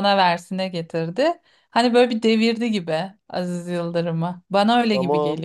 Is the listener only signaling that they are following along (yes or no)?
no